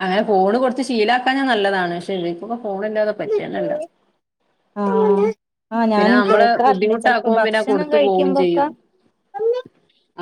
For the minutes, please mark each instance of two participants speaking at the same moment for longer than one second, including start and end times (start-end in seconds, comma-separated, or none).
6.7-8.6